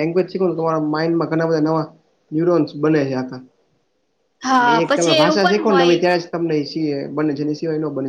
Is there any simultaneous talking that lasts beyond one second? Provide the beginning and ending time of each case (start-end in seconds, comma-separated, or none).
4.6-6.2